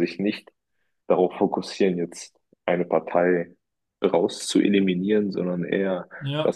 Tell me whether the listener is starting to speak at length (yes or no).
no